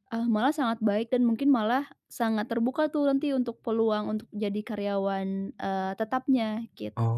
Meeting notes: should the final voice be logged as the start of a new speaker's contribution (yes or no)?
yes